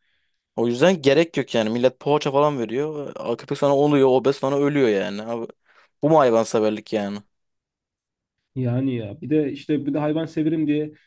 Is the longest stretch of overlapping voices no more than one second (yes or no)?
yes